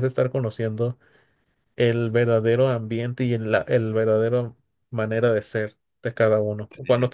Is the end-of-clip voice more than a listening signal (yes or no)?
yes